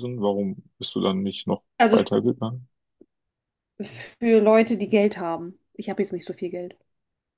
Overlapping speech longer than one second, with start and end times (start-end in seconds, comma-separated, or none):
none